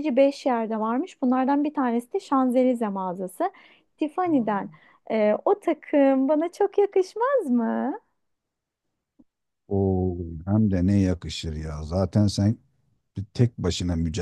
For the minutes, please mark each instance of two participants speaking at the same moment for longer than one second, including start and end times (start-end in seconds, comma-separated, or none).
none